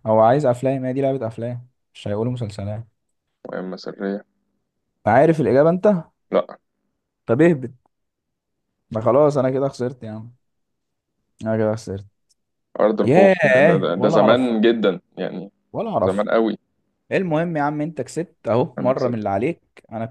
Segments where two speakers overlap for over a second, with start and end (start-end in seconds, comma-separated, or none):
13.0-14.5